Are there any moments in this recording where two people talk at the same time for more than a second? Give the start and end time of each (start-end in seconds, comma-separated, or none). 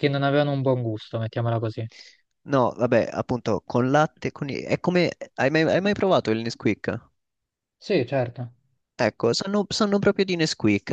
none